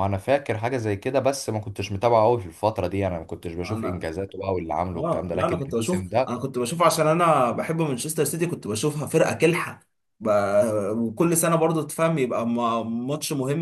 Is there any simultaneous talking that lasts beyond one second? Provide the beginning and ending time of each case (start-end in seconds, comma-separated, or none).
4.9-6.5